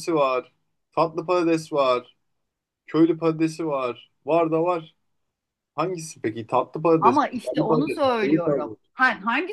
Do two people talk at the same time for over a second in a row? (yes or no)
yes